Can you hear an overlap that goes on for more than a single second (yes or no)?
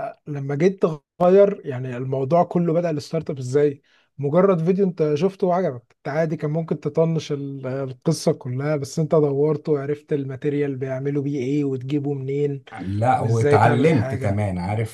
yes